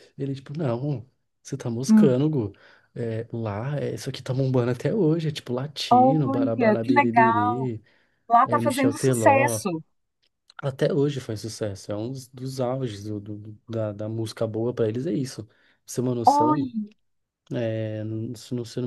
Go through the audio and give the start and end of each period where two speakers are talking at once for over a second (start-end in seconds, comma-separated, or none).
5.9-7.7, 8.4-9.6